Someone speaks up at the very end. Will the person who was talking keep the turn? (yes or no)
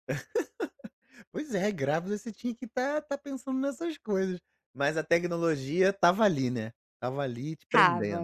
no